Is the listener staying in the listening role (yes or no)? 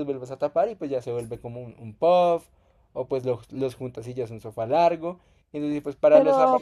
no